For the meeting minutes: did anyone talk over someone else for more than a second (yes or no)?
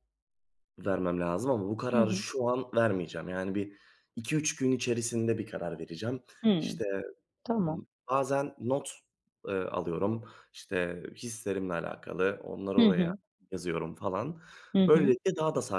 no